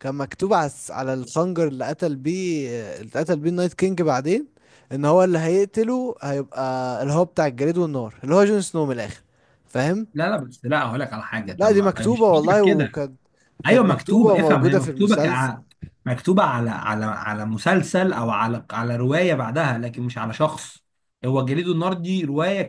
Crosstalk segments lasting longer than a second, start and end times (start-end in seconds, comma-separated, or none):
11.6-13.0, 13.7-15.5